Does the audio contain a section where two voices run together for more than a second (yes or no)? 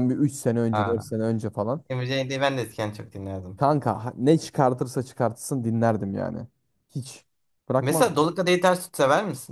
no